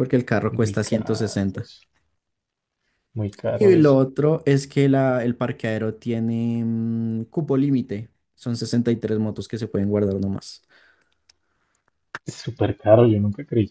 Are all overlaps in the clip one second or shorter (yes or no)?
no